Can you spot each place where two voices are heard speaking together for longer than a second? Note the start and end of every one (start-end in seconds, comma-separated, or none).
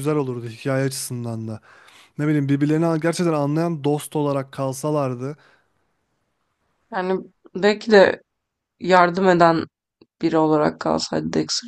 none